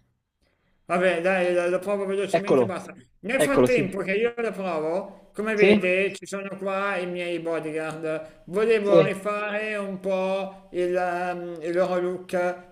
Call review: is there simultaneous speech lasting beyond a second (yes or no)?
no